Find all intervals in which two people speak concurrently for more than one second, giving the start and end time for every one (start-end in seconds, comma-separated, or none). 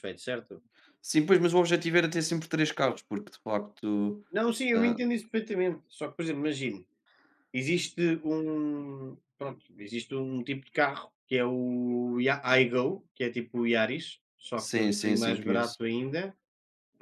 14.6-15.8